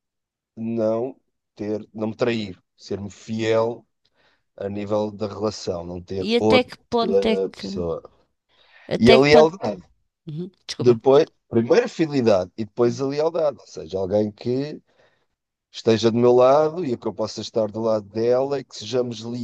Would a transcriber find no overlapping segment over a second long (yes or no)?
yes